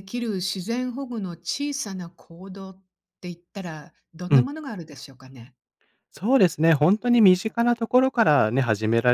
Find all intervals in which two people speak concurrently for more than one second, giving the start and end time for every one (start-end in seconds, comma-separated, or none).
none